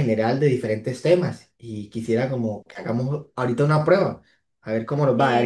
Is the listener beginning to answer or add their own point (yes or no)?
no